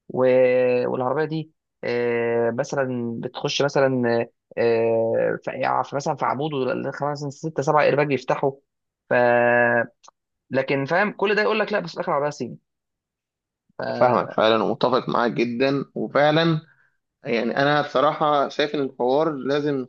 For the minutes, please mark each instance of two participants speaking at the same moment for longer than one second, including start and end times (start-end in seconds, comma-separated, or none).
none